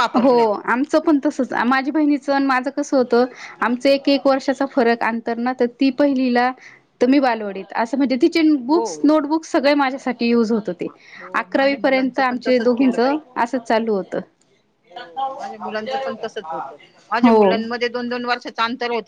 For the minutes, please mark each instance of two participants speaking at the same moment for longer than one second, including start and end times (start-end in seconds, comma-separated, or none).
11.4-13.2